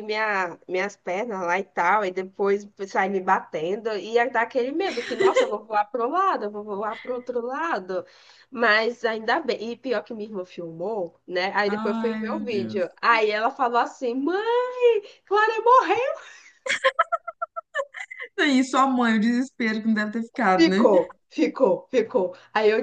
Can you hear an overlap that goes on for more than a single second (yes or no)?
yes